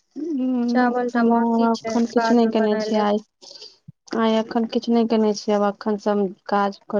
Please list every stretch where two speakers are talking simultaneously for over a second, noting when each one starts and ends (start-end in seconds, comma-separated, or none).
1.3-3.0